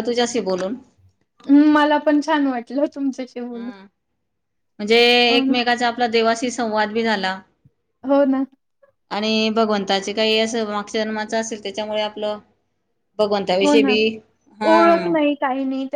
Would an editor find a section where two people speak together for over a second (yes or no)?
no